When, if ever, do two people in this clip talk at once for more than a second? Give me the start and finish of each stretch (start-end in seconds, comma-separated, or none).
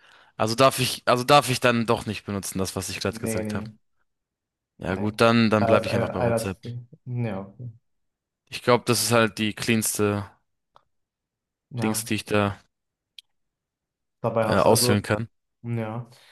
4.8-6.6